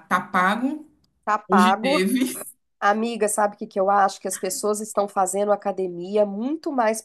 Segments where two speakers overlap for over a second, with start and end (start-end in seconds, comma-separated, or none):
none